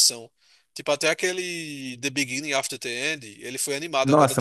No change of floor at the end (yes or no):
no